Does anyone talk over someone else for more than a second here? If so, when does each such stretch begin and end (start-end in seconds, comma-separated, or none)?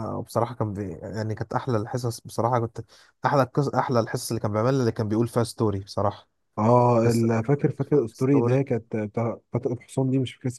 7.0-8.6